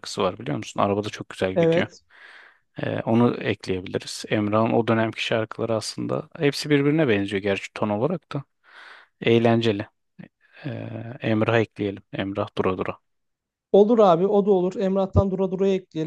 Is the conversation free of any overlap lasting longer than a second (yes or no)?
yes